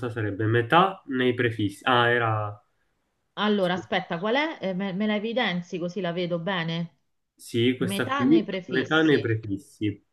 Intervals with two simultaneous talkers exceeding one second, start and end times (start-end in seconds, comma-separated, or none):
7.8-9.3